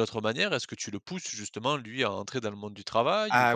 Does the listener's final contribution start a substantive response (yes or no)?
yes